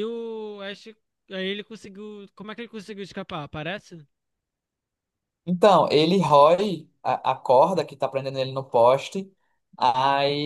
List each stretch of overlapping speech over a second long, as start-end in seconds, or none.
none